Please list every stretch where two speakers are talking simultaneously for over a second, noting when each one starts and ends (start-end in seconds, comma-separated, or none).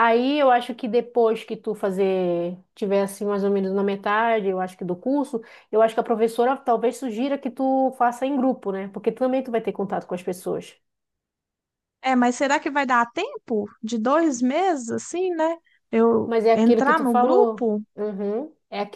16.2-17.8